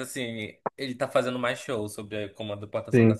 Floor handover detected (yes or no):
yes